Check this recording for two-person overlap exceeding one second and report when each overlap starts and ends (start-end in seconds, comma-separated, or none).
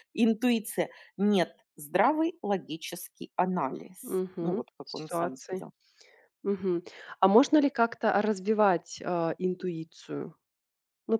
4.0-5.7